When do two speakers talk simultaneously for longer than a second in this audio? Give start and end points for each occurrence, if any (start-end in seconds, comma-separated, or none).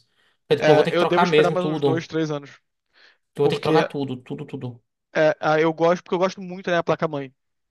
0.6-2.0